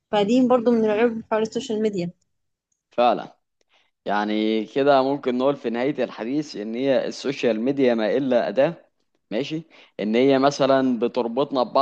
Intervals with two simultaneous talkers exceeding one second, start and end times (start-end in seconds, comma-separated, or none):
none